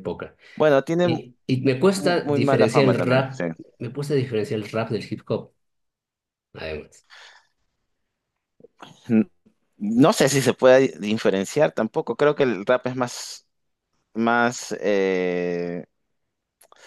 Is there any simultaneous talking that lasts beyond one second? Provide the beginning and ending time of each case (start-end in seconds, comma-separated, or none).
1.7-3.4